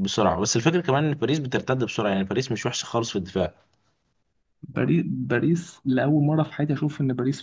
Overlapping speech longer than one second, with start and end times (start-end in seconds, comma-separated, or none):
none